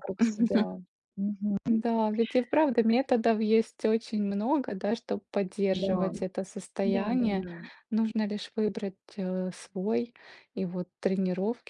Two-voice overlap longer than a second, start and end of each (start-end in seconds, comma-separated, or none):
none